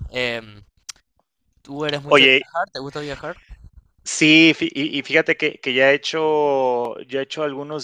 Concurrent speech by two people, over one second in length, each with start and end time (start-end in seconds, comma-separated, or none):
none